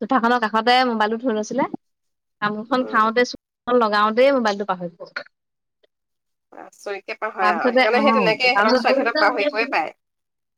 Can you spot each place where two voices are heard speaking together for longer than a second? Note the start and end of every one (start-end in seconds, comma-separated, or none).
7.4-9.7